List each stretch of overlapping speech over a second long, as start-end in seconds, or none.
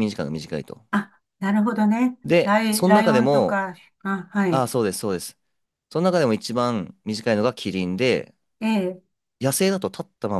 2.2-3.6